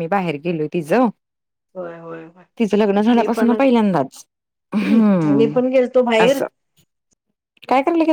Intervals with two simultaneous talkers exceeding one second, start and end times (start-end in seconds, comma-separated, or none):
none